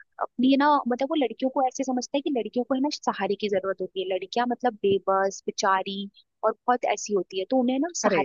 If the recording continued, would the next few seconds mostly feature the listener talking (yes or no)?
no